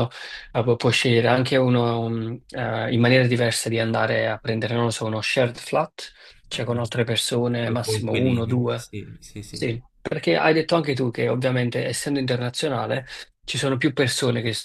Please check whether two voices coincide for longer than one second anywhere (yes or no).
yes